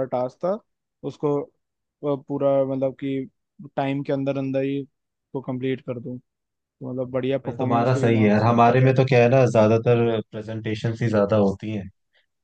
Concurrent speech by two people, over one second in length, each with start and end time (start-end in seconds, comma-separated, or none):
7.5-9.0